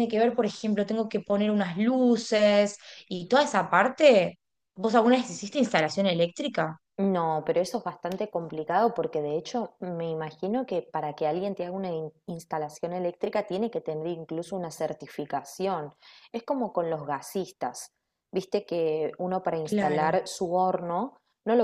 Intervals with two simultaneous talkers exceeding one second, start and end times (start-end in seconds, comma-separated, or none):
none